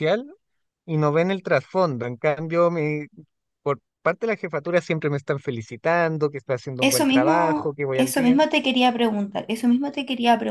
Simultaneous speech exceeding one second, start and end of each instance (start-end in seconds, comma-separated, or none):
6.8-8.4